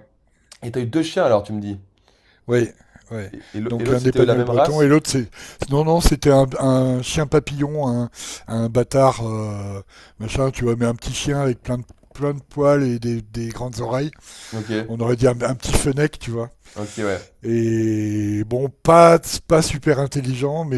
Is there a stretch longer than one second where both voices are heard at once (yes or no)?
yes